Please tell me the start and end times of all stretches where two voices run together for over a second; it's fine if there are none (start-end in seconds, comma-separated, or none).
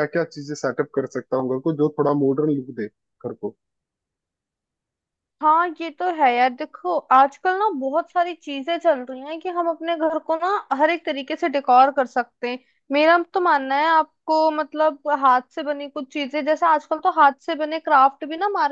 none